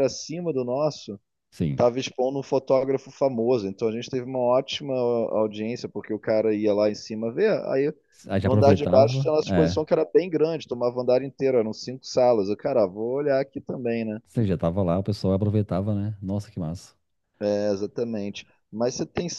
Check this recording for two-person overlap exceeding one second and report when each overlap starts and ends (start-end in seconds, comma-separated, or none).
8.4-9.8